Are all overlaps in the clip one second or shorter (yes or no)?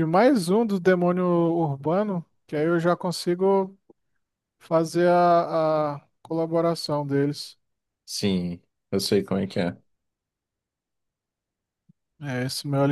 yes